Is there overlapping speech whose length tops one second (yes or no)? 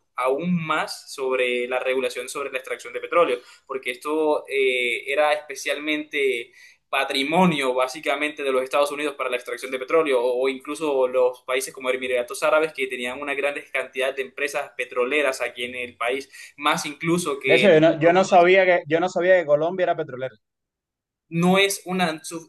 no